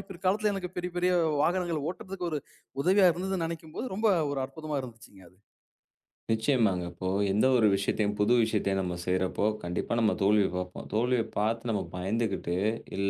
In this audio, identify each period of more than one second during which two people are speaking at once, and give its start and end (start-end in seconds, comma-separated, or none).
none